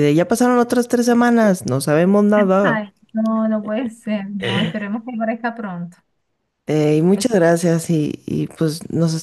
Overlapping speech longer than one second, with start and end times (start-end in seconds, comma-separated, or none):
none